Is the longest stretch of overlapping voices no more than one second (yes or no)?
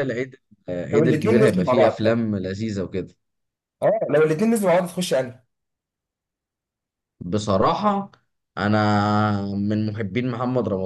no